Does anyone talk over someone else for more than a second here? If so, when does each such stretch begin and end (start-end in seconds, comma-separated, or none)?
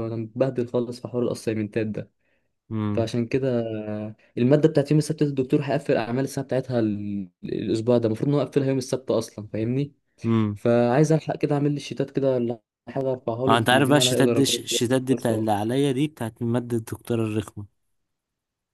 13.5-15.7